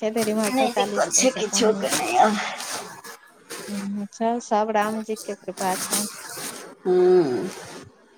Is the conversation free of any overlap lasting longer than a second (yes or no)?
no